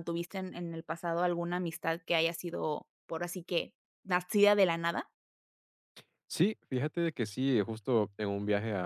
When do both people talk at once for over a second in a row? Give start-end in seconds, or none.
none